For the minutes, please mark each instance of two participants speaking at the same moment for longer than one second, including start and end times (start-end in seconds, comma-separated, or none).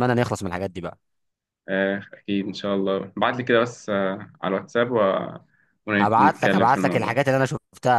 6.0-7.2